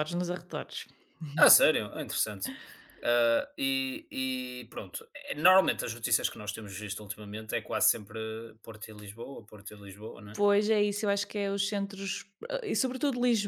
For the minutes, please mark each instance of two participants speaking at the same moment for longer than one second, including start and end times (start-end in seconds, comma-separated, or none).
none